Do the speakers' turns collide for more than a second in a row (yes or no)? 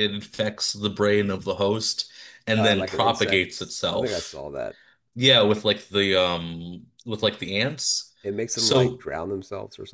yes